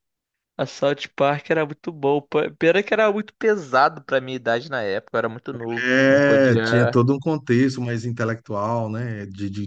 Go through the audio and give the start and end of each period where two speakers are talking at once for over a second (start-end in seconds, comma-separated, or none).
5.8-7.0